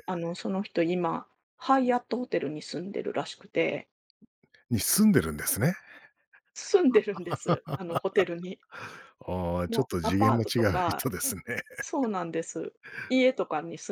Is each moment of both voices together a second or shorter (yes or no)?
no